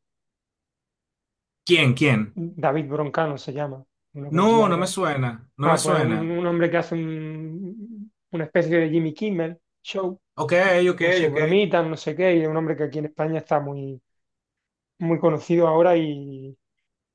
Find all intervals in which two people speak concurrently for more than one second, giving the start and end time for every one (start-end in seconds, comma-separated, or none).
none